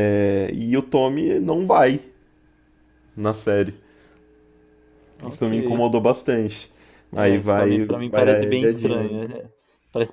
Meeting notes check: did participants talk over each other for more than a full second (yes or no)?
yes